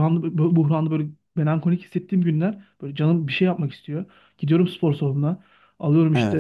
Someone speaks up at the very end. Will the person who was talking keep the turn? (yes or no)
yes